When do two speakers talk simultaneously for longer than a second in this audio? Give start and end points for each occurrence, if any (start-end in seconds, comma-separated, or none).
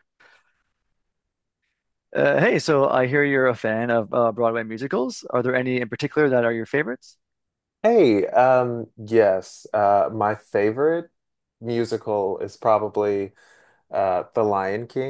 none